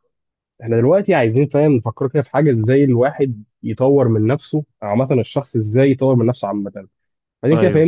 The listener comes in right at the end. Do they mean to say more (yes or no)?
no